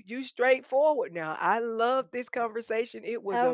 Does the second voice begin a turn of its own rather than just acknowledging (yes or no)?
yes